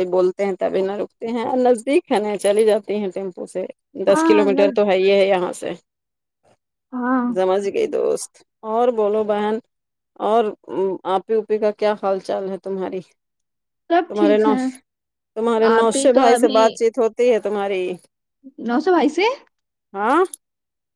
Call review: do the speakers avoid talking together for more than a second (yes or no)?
yes